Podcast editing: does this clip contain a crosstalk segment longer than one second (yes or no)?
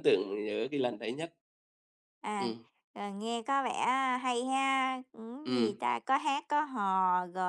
no